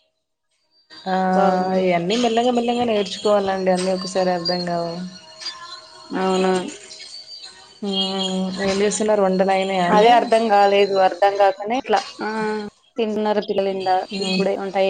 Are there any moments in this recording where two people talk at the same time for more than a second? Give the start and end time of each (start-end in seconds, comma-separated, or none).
none